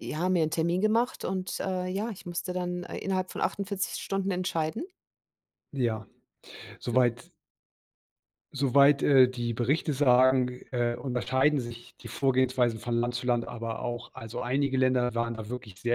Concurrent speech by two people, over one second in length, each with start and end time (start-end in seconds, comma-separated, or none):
none